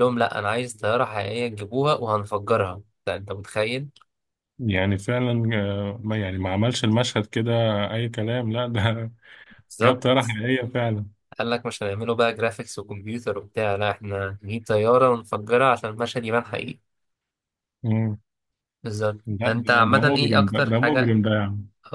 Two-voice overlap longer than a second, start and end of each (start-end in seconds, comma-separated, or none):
19.3-21.2